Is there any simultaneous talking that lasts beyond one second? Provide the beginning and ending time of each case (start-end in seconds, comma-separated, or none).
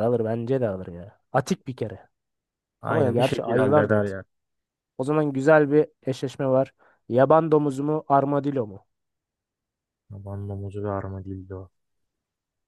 2.9-4.2